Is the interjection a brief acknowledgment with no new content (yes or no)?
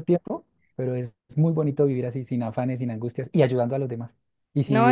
no